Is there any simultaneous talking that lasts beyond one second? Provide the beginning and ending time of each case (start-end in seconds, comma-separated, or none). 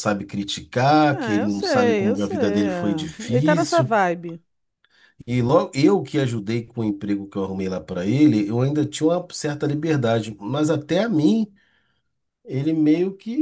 1.1-3.9